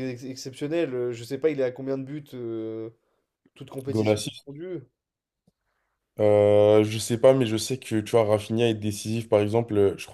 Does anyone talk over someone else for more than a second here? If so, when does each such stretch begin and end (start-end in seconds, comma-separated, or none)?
none